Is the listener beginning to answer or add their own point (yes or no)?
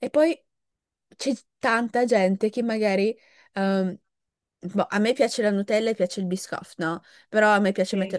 no